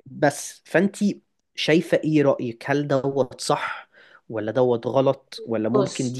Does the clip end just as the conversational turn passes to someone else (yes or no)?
no